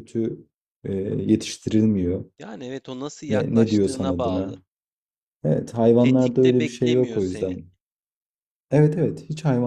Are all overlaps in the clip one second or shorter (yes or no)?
no